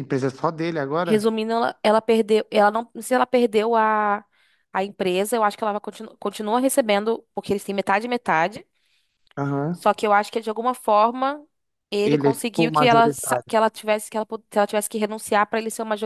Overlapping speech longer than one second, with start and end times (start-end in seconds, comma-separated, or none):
12.0-13.5